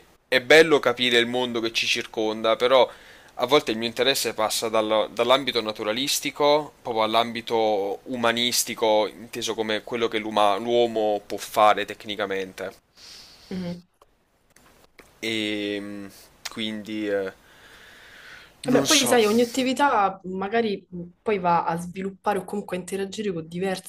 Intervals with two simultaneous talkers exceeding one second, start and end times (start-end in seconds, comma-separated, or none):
none